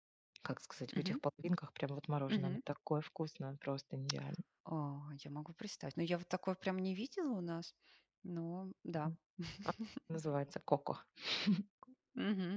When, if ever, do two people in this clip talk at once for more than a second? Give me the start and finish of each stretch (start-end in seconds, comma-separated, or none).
none